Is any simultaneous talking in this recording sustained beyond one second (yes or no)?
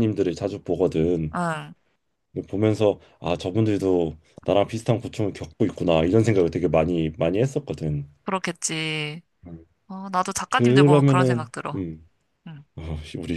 yes